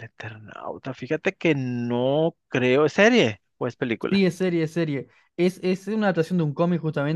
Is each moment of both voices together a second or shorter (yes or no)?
yes